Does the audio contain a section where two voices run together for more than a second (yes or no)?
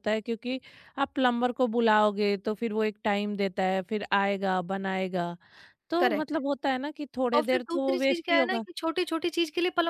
yes